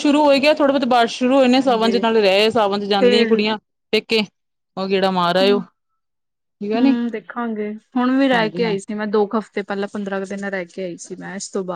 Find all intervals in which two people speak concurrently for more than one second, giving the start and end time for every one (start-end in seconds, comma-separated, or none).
none